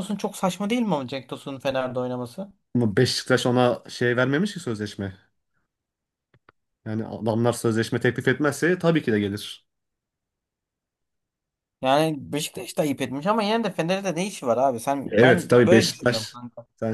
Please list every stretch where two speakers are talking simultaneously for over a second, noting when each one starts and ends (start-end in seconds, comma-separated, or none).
15.1-16.4